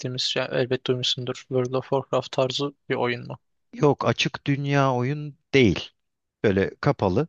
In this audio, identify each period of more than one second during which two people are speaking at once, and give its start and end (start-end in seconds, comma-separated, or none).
none